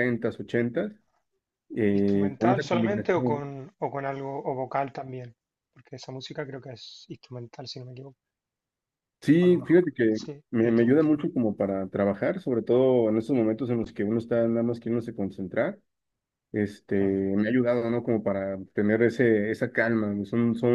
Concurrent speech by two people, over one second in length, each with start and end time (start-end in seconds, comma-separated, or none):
2.0-3.4, 9.4-11.2